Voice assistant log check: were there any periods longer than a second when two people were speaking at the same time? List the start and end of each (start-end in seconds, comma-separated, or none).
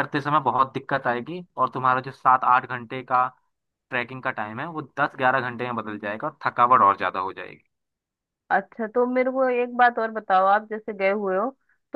none